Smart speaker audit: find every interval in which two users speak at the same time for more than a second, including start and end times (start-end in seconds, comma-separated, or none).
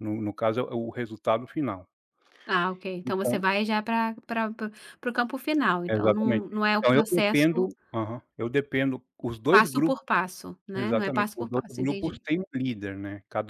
5.9-7.7, 10.7-12.2